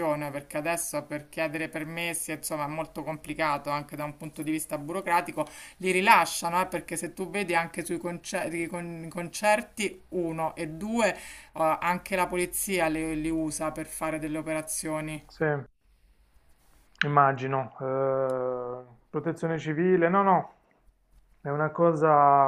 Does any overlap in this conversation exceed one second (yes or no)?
no